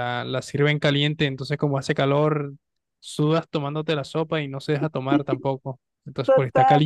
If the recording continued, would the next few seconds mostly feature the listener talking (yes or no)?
yes